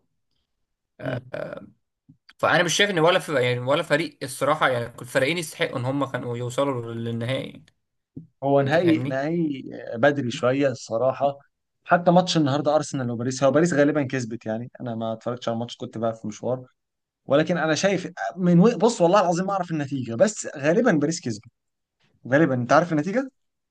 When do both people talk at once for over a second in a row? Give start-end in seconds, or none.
none